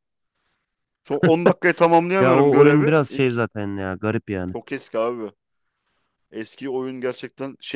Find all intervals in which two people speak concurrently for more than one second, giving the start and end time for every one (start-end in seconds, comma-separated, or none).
2.2-3.4